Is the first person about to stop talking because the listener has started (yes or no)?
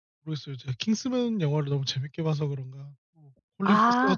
yes